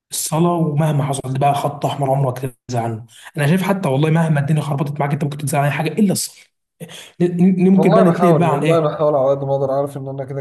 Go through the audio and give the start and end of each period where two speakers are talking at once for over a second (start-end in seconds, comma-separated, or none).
7.8-9.0